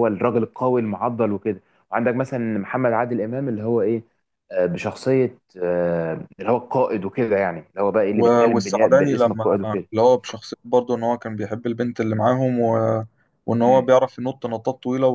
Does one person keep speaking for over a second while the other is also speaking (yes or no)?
yes